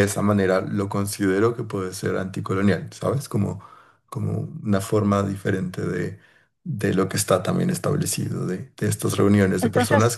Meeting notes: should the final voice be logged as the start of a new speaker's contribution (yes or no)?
no